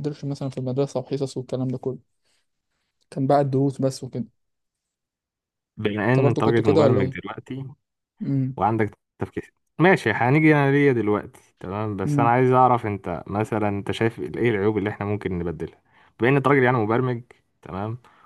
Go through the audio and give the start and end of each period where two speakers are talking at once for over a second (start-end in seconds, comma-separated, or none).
6.1-7.3